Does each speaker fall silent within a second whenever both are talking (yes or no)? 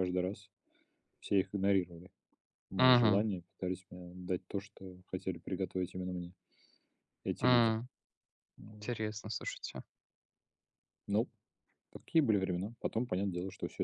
yes